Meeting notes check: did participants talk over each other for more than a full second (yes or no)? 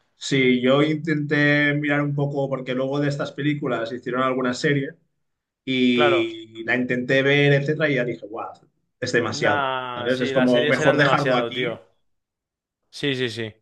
yes